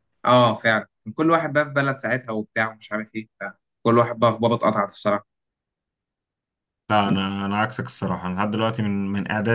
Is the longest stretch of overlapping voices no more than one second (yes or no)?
yes